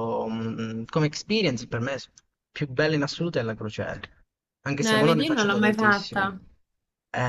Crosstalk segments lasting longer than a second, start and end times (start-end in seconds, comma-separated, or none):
4.8-6.4